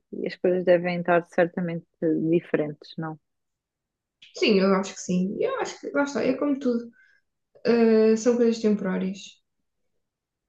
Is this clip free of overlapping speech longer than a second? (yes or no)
yes